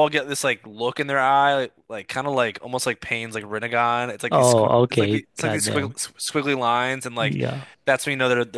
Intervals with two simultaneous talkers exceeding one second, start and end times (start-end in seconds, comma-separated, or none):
4.3-6.0